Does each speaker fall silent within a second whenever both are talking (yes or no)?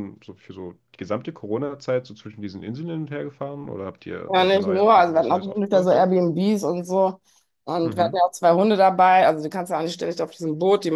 no